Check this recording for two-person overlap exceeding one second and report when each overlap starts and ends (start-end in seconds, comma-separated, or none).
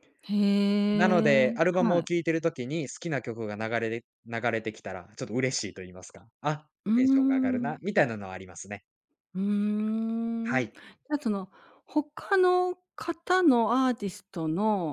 0.9-2.2